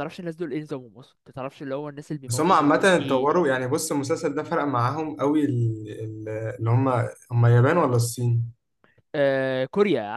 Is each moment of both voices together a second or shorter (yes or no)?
no